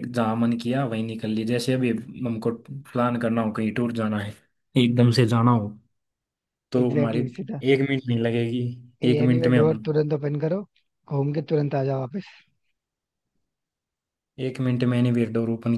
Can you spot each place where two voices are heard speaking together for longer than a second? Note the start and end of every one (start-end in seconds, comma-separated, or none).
none